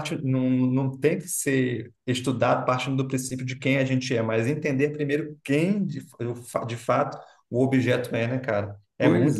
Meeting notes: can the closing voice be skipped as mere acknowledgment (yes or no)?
no